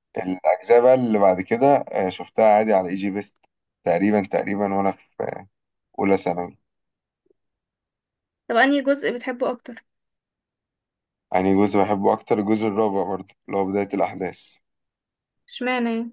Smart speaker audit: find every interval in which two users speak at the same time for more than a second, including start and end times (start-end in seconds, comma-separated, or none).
none